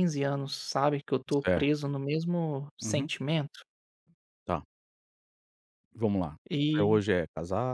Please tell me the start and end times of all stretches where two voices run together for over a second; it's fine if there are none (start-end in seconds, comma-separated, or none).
none